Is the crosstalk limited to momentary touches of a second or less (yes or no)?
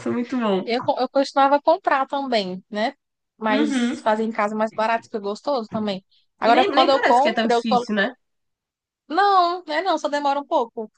no